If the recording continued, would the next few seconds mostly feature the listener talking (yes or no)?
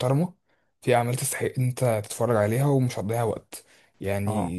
no